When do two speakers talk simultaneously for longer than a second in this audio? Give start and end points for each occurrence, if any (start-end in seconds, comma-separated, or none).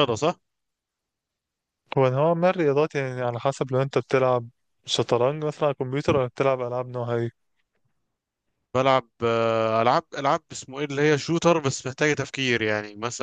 none